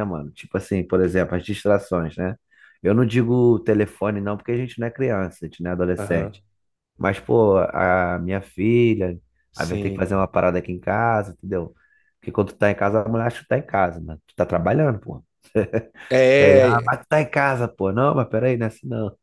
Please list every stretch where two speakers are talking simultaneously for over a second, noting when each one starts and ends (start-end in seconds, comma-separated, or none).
none